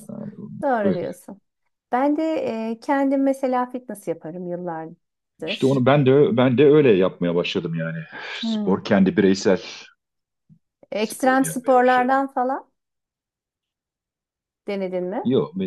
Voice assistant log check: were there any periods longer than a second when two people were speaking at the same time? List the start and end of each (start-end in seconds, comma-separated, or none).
11.0-12.2